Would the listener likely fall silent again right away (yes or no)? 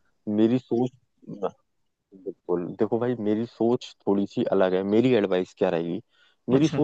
yes